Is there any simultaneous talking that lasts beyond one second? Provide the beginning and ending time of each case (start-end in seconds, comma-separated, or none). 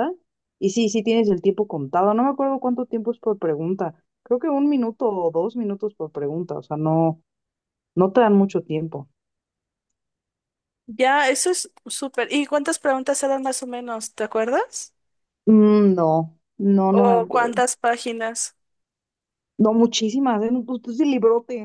none